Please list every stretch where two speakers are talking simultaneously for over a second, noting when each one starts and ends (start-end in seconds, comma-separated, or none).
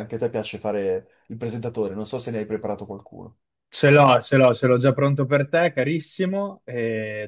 none